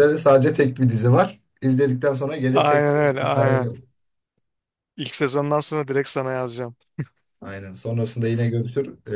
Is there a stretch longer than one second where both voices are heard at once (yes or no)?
yes